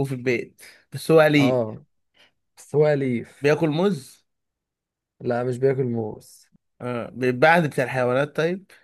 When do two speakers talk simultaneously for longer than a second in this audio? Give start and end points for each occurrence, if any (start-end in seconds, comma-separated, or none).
none